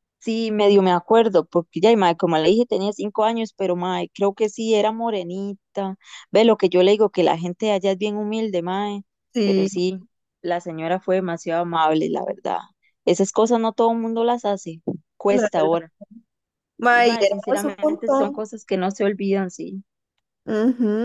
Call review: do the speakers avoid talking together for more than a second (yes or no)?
no